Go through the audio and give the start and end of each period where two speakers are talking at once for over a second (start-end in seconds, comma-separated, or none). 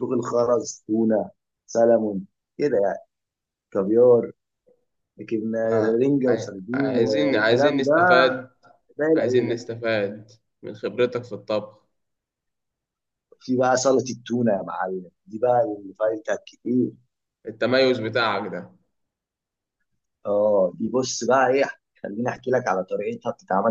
6.0-7.9